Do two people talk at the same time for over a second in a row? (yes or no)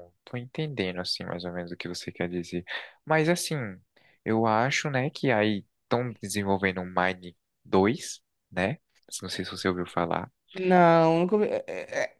no